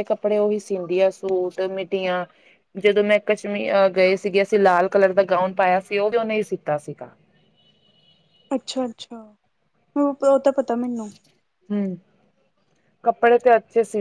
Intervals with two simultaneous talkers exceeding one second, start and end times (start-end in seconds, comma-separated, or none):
none